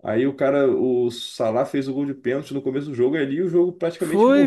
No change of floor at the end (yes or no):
no